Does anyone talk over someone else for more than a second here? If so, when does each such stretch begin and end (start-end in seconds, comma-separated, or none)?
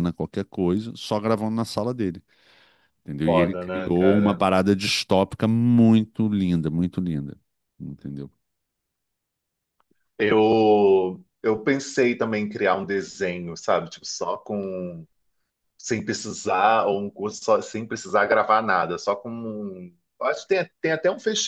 3.2-4.4